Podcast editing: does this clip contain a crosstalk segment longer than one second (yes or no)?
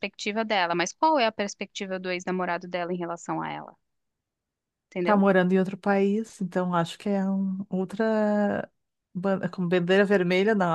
no